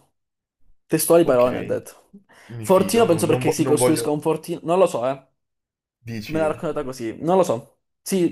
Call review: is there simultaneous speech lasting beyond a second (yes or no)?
yes